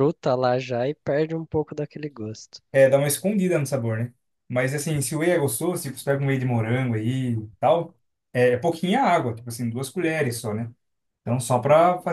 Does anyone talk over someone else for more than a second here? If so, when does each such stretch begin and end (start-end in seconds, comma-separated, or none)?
none